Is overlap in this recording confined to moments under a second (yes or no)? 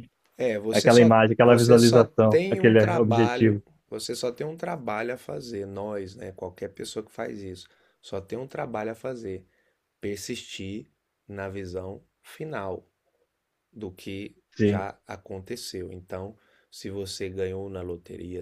no